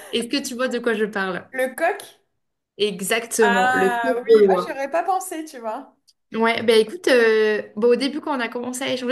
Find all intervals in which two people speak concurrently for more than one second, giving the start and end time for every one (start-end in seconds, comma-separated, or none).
3.4-4.8